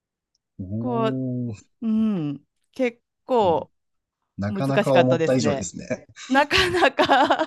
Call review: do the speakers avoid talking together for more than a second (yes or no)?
no